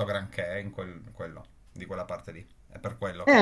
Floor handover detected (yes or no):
yes